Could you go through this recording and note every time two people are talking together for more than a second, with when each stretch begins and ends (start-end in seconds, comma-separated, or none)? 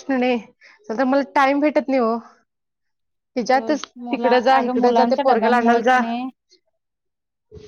4.0-6.0